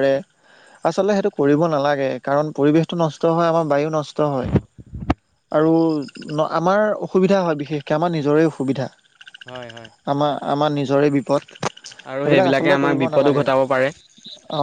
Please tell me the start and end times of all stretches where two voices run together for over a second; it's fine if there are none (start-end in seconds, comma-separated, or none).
12.1-13.9